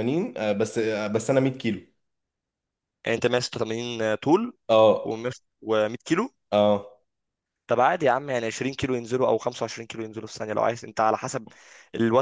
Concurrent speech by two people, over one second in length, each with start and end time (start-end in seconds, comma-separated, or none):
none